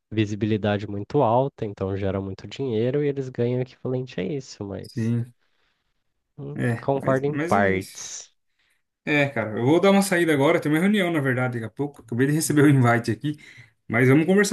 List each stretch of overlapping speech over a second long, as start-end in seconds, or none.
6.5-8.2